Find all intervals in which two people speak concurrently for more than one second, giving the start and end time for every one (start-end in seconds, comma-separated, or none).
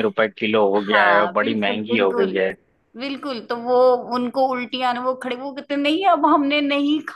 0.8-2.3